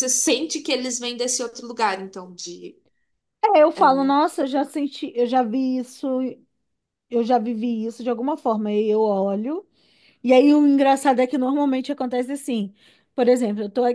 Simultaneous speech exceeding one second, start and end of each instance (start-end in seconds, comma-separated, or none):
none